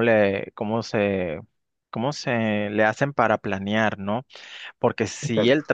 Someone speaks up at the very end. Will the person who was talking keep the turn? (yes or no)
yes